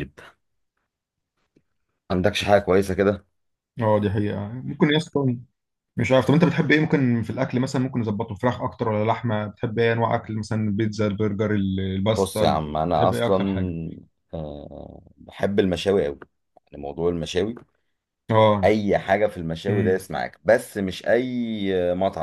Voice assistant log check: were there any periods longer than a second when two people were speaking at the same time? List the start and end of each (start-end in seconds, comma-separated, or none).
12.1-13.4